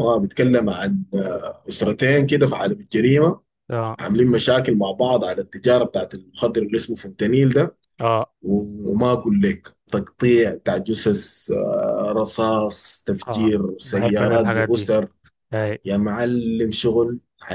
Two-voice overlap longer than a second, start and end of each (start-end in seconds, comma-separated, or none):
13.3-14.9